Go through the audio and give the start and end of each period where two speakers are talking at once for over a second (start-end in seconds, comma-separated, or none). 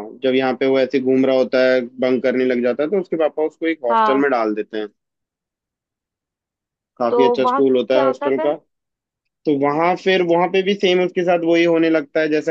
7.1-8.5